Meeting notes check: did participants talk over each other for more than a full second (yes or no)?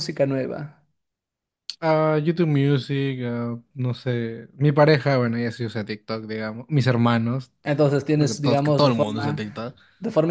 yes